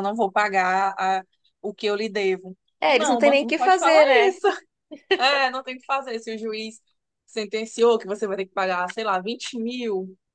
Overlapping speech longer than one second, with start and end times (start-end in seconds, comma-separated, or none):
2.8-4.3